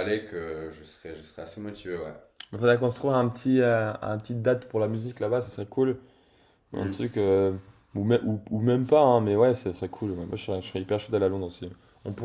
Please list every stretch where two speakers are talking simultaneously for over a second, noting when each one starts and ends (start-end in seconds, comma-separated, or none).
none